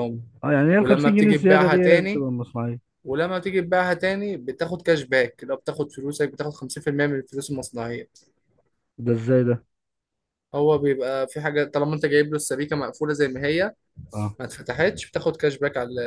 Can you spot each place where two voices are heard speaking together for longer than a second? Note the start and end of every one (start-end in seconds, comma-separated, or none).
0.8-2.3